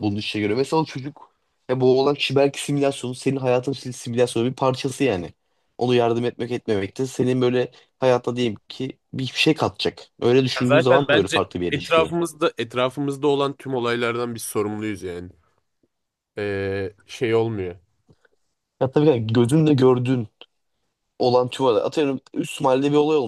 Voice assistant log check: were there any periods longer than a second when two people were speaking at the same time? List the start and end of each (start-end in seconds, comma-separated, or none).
10.6-12.1